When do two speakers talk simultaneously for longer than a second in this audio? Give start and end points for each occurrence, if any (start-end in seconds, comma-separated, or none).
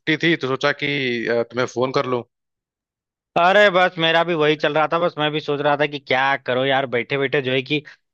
none